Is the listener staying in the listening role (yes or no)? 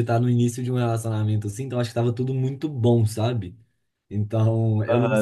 no